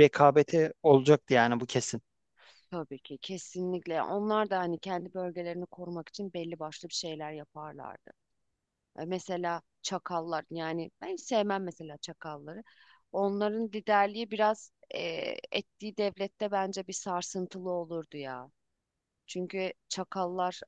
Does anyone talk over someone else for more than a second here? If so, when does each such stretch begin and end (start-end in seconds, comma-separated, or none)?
none